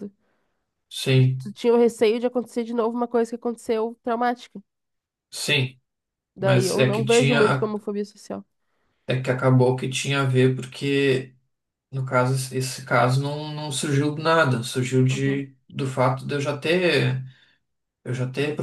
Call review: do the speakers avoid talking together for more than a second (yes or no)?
no